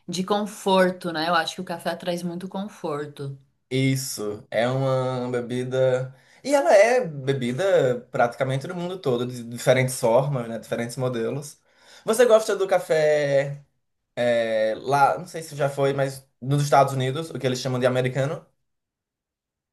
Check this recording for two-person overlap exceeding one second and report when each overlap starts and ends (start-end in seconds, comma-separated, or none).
none